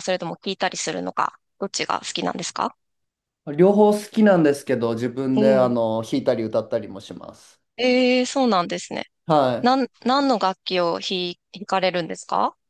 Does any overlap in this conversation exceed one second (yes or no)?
no